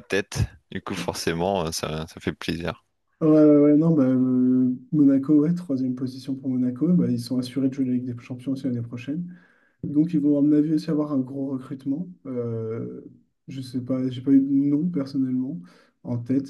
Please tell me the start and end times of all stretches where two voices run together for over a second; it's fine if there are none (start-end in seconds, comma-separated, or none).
none